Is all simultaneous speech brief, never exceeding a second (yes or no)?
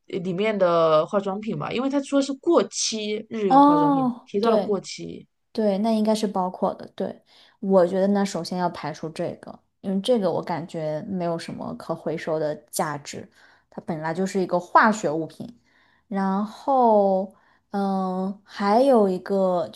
no